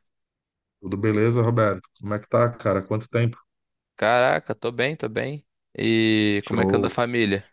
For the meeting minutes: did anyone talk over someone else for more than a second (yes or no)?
no